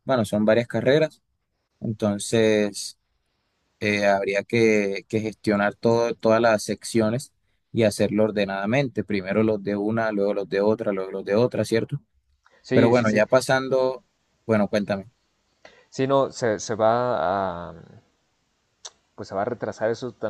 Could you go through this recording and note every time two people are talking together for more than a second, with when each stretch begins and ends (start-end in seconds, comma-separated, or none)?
none